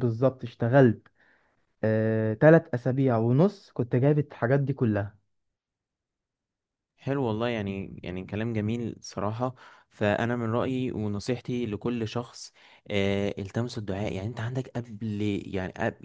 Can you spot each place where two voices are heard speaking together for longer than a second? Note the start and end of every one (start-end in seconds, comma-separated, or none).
none